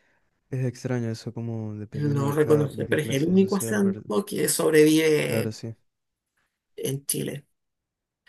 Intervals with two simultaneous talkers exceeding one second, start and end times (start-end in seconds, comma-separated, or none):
1.9-4.0